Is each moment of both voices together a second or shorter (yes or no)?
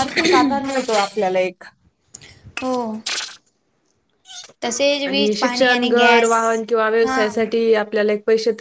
no